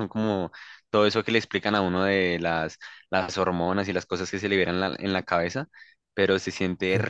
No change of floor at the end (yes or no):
yes